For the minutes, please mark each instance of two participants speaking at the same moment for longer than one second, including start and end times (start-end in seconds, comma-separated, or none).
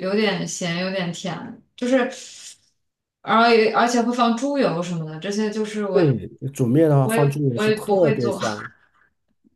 7.0-8.4